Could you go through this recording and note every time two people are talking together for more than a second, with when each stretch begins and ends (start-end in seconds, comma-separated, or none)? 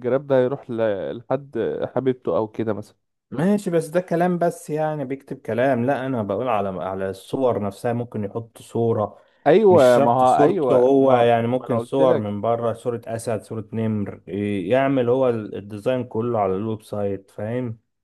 9.7-12.3